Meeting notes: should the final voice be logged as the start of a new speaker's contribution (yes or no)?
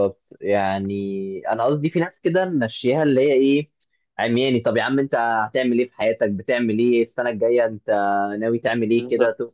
no